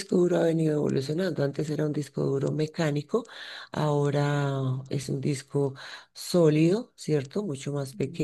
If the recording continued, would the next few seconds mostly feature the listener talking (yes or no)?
no